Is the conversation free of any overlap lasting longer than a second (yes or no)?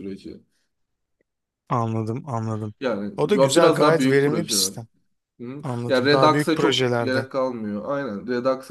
no